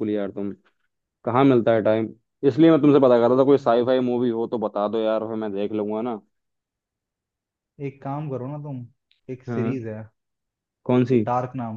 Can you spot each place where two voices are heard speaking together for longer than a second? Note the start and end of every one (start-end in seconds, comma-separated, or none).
none